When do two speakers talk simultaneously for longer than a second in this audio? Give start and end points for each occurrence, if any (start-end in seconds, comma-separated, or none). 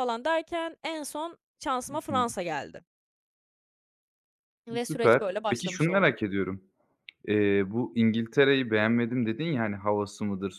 4.8-6.2